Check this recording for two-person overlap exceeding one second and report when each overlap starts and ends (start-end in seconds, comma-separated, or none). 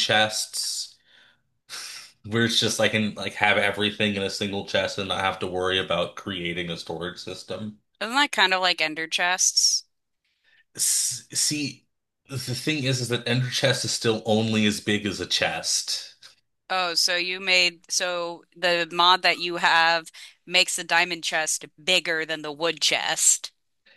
none